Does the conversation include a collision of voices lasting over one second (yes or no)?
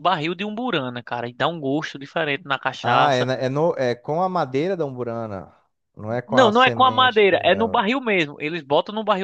yes